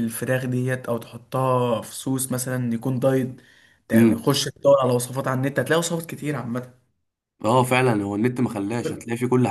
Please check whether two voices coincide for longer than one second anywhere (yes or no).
no